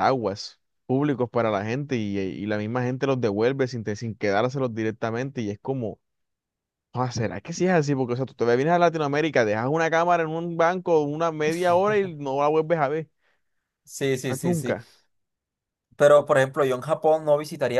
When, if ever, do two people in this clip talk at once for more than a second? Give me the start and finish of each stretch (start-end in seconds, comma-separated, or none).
none